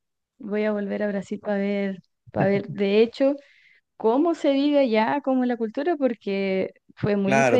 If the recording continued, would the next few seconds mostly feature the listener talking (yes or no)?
yes